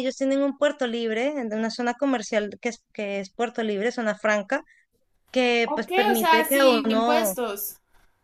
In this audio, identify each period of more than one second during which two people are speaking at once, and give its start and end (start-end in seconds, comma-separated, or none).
5.7-7.3